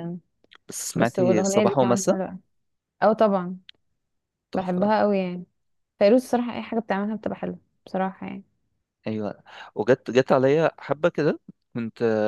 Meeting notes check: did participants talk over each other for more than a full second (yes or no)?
yes